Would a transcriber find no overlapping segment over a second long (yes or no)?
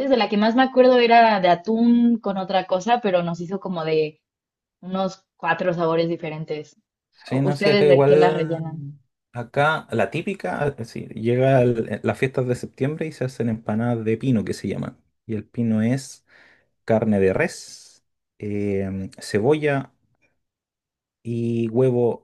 no